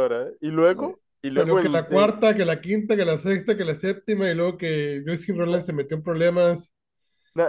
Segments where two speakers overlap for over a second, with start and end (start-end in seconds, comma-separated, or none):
0.7-2.1